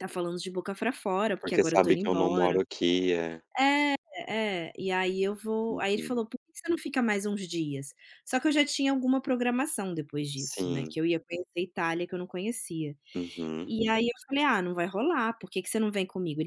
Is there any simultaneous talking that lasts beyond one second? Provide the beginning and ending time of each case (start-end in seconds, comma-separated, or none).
1.4-2.6